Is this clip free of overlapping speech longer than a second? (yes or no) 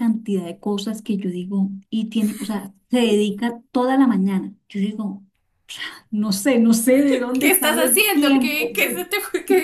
no